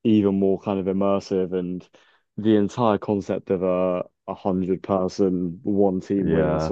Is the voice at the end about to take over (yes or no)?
no